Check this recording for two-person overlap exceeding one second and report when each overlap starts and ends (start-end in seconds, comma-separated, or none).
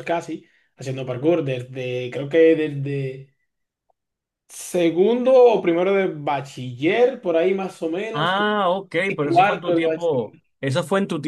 9.2-10.5